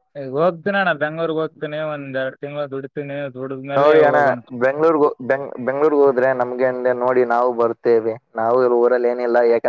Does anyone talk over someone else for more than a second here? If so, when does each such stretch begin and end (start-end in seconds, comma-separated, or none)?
none